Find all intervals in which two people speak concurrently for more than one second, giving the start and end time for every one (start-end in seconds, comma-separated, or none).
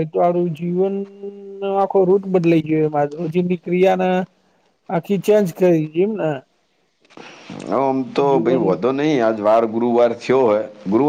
none